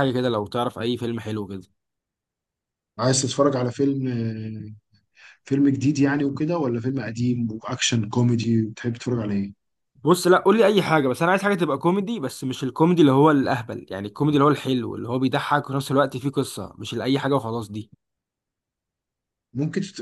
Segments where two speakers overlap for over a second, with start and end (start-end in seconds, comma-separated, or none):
none